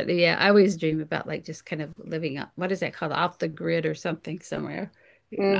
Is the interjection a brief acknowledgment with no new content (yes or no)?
no